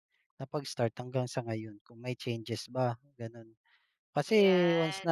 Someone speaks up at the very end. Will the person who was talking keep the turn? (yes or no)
yes